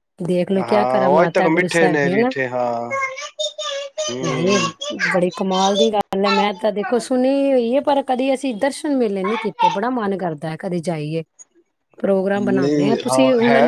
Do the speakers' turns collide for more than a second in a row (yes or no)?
yes